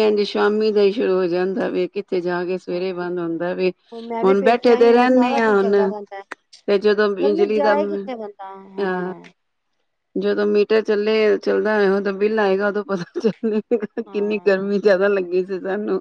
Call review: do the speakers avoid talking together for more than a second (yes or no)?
no